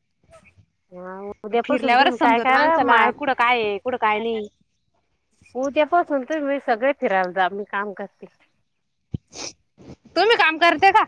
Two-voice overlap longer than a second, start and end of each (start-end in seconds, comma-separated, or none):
1.6-3.1